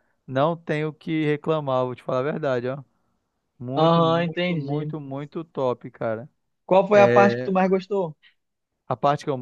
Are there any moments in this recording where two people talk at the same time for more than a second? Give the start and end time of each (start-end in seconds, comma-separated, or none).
3.7-4.9